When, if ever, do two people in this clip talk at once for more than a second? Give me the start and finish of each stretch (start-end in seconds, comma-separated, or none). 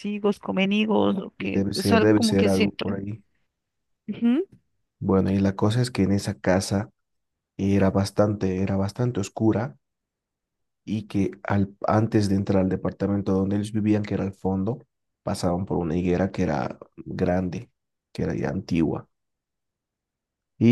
1.4-3.0